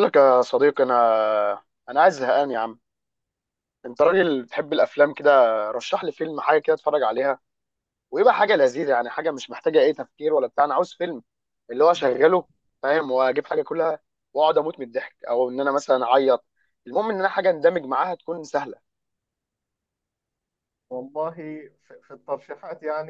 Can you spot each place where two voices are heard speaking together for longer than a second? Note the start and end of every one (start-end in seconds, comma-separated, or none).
none